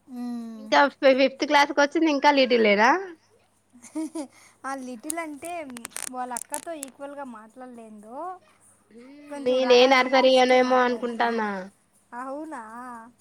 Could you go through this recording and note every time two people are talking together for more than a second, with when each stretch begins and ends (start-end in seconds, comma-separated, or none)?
9.5-11.4